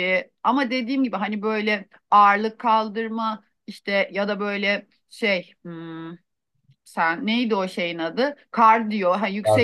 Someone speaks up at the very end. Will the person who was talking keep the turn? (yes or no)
yes